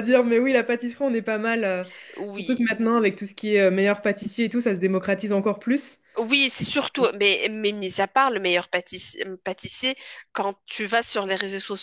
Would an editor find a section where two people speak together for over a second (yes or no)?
no